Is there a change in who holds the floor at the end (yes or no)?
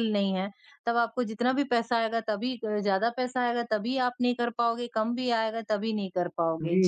yes